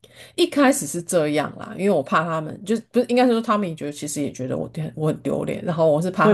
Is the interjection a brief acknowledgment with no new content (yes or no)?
no